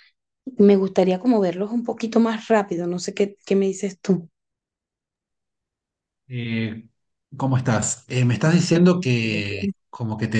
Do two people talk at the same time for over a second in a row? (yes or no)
no